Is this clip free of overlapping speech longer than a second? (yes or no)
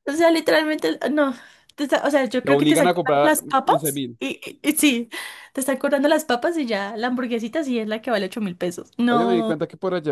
no